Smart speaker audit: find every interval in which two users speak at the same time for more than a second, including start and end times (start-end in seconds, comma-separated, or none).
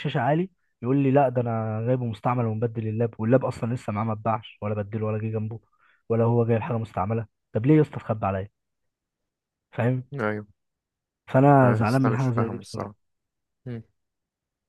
11.6-12.9